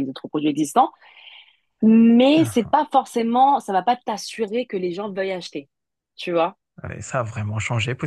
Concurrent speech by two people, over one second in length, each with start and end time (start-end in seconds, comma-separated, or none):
none